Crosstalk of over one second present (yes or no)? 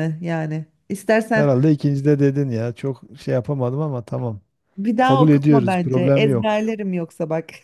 yes